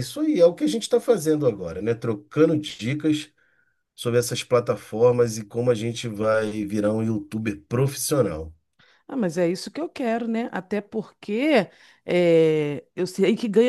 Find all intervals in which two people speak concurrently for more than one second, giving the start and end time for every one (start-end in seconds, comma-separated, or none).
none